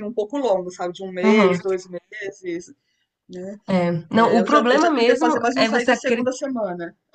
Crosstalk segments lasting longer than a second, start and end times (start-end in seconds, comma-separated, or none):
4.1-6.3